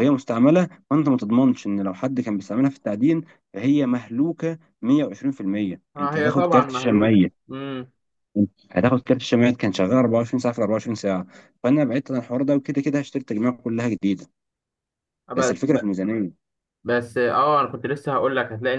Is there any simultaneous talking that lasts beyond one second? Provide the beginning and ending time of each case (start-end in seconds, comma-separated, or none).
6.0-7.3